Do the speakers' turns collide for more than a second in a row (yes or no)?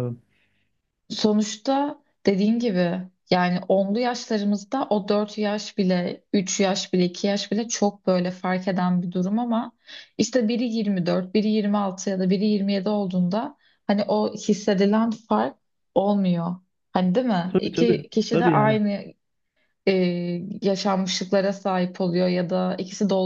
yes